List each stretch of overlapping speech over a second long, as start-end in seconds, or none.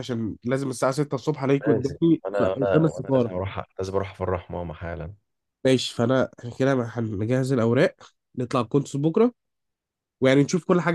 1.7-3.3